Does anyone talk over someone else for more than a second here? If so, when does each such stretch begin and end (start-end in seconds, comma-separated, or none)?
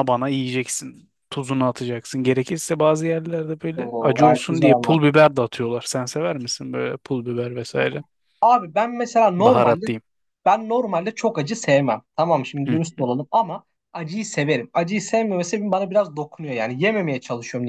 3.7-5.0